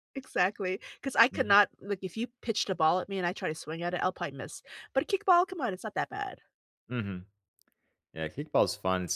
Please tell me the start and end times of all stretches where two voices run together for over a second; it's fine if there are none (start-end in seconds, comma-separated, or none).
none